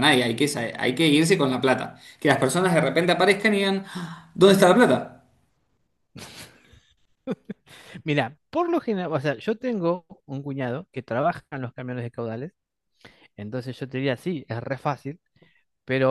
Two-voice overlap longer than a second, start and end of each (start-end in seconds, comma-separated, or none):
none